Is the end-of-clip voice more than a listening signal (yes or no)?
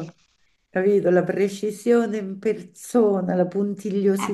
yes